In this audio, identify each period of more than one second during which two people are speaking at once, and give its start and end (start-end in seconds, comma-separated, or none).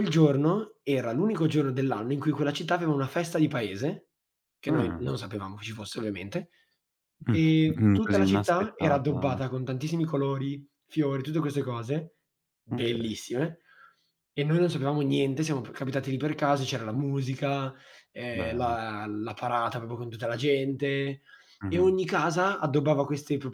7.3-9.4